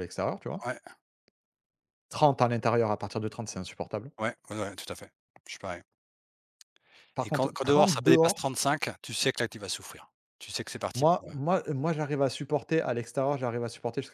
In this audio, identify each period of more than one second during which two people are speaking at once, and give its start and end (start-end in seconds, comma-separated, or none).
7.2-8.5